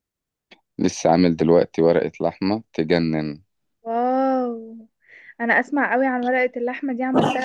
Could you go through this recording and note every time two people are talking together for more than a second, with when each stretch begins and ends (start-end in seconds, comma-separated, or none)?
none